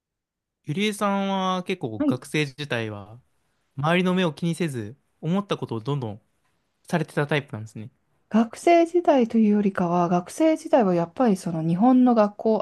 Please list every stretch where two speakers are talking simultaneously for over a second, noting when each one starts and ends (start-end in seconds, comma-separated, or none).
none